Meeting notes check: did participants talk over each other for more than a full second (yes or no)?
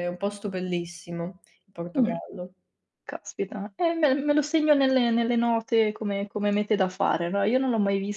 no